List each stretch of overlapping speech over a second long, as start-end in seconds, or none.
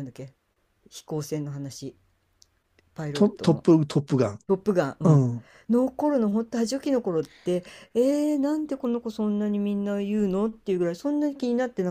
none